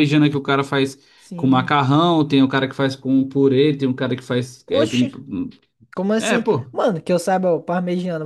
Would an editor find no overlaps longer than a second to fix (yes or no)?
yes